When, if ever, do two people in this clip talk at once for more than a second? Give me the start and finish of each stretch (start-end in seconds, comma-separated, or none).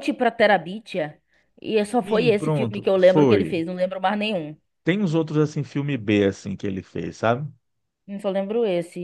2.0-3.6